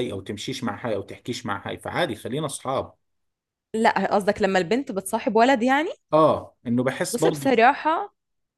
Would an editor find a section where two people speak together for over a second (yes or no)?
no